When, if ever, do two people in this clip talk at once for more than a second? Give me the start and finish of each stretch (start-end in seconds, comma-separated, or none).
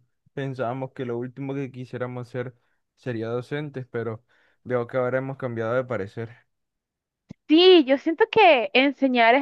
none